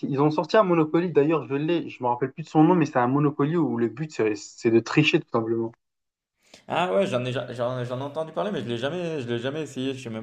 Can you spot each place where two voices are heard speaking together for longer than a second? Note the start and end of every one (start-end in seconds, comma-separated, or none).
none